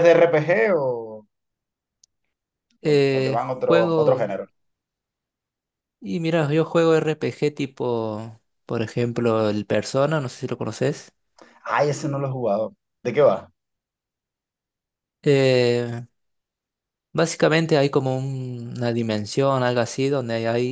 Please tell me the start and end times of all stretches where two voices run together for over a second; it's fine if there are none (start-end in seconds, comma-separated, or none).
2.9-4.3